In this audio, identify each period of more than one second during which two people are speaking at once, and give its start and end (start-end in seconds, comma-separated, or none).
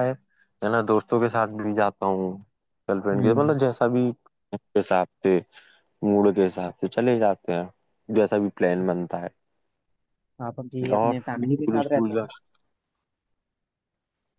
10.9-12.3